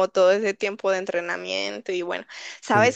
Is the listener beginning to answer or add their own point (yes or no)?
no